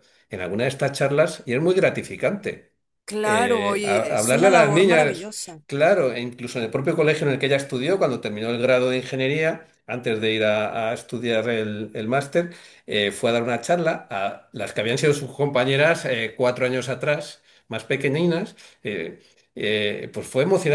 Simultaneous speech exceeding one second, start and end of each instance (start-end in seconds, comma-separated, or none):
3.2-5.3